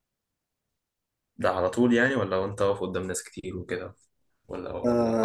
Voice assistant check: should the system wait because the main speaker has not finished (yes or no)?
no